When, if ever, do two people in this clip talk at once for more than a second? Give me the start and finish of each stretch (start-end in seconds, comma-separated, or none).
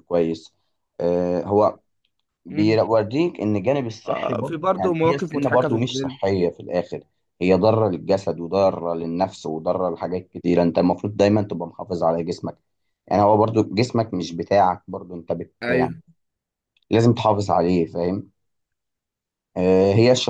4.0-6.2